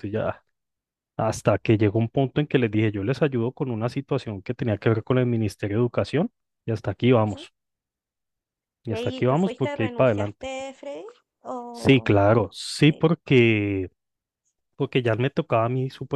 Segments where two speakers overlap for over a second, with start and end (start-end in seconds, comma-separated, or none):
8.9-10.5